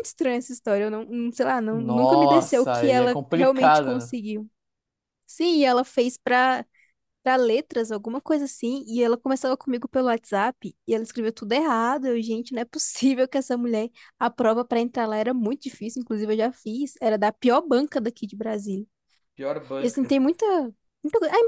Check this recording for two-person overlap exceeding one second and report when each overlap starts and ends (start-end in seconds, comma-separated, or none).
1.7-4.2